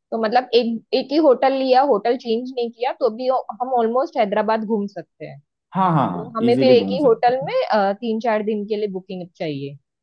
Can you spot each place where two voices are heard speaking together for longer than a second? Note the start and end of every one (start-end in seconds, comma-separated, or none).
5.9-7.5